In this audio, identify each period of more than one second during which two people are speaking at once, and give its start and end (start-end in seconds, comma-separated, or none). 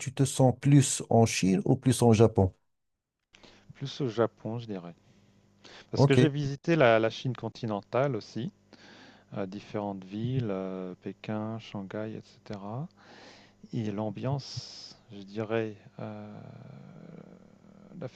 none